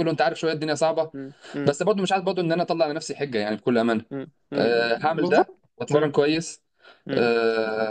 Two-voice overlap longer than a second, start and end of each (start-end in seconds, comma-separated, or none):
4.6-6.2